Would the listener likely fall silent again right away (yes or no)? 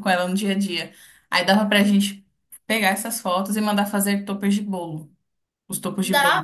no